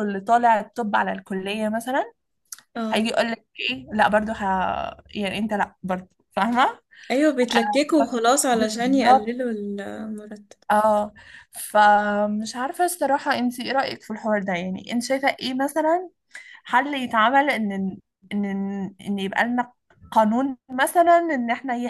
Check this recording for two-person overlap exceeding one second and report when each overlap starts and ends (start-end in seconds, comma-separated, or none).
7.5-9.4